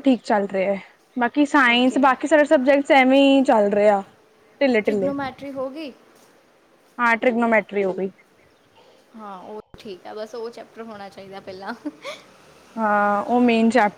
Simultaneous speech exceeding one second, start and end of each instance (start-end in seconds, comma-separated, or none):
none